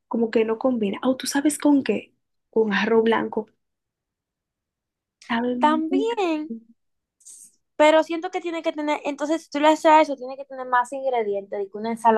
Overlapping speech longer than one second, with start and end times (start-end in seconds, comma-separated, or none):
none